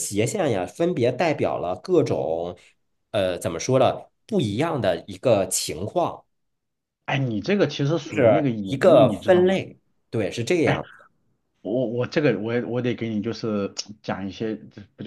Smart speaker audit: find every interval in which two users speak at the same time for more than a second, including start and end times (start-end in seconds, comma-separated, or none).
8.0-9.6